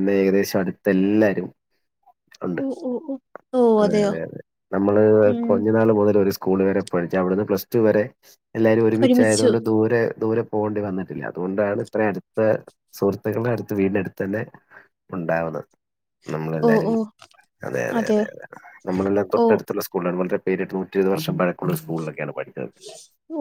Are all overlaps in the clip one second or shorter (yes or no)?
yes